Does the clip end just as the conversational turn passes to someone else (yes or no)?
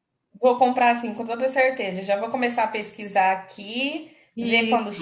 no